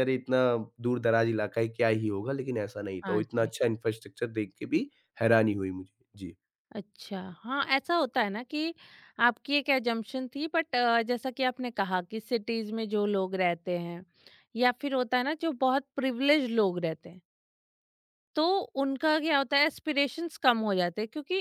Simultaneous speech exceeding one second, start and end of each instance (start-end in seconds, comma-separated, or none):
none